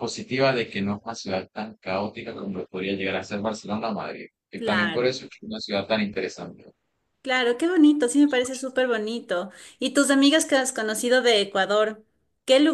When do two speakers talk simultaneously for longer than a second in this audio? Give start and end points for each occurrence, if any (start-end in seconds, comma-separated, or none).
none